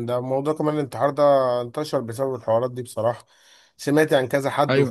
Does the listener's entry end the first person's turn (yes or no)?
no